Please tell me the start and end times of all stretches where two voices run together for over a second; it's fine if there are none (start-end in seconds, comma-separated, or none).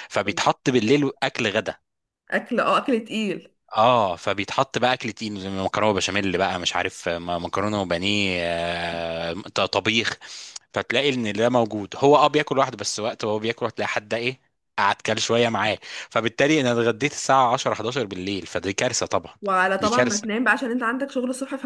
none